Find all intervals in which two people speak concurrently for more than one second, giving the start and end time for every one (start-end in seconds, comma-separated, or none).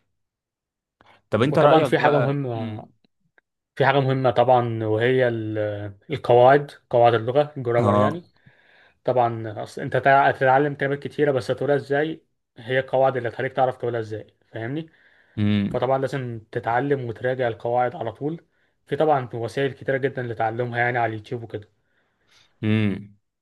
1.5-2.9